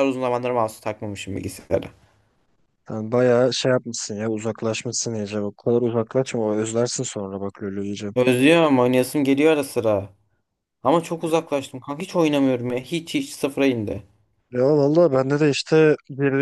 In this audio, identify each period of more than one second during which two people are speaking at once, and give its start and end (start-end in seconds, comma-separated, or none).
none